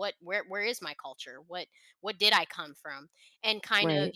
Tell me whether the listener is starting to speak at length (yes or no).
no